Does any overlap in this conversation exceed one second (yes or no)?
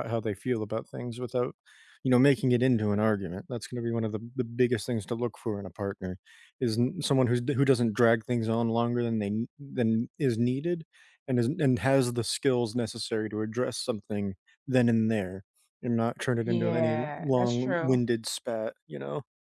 yes